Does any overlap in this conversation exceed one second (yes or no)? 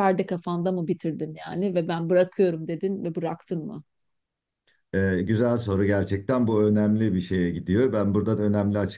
no